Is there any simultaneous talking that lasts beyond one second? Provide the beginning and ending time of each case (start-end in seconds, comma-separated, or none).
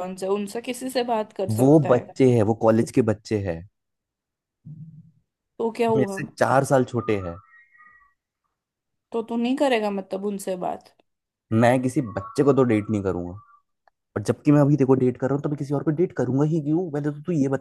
none